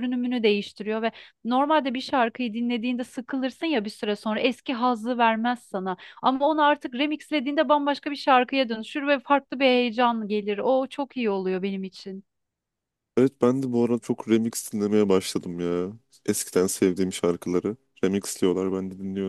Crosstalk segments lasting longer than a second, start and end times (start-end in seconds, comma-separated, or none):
none